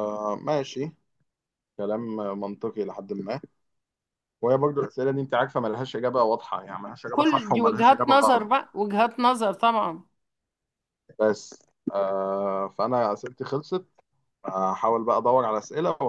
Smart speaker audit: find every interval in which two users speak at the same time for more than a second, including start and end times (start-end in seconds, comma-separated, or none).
7.1-8.4